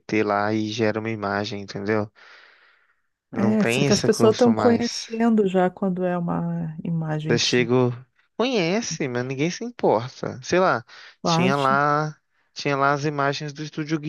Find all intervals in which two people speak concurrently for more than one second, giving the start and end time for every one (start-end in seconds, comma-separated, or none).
3.3-5.1